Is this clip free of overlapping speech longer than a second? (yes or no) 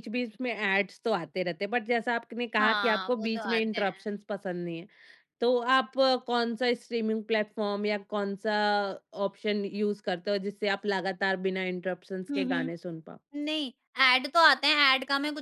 no